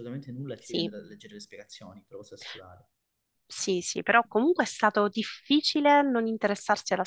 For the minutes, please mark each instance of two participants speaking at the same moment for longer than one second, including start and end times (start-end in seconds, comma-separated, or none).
none